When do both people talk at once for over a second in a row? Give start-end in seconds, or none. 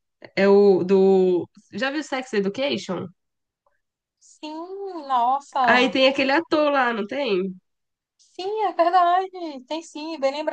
none